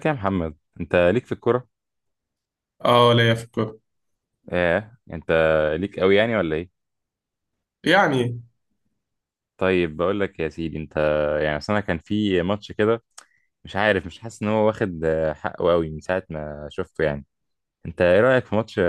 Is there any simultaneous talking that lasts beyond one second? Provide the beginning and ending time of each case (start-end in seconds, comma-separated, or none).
none